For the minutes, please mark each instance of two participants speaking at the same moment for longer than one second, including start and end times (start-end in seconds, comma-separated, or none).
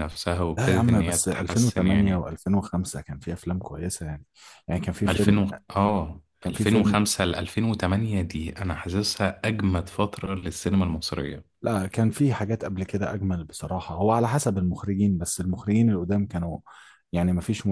0.6-2.3